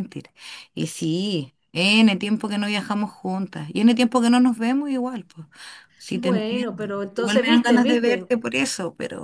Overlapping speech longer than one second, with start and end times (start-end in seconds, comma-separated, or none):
6.1-8.3